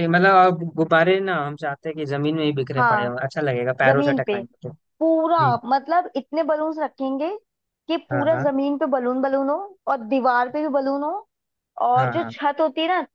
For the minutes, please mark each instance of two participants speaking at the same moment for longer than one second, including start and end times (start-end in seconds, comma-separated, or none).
none